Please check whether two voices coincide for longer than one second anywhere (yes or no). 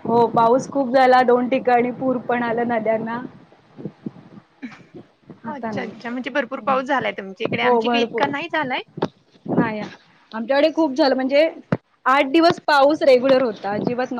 yes